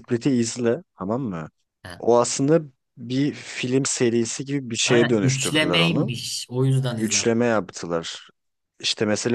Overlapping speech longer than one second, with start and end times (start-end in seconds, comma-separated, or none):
4.9-6.1